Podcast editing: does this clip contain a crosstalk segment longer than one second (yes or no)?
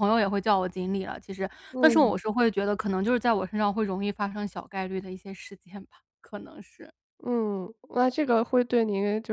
no